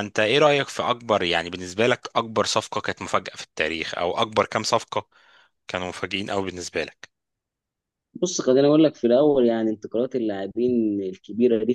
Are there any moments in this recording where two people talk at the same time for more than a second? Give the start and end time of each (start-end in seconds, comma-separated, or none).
none